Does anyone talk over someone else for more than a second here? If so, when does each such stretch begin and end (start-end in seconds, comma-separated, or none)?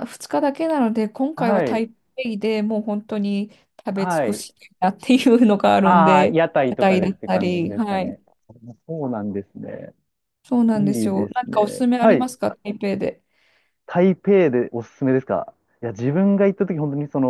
5.8-8.2, 10.7-12.2